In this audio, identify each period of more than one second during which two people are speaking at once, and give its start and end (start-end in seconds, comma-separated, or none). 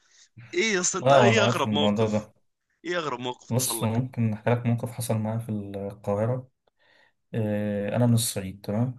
1.0-2.3